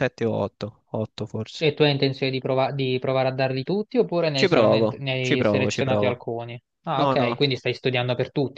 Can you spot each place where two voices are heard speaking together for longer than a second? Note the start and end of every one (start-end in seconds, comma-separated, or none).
4.3-6.3